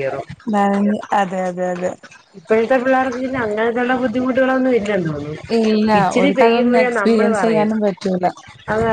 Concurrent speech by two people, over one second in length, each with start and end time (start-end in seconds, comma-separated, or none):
none